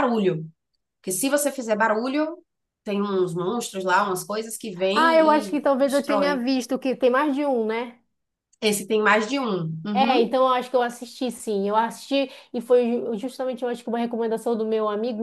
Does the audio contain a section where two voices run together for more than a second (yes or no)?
yes